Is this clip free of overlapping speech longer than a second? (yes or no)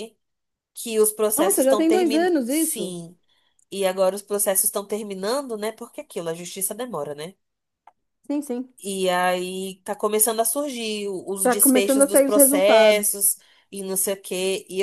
no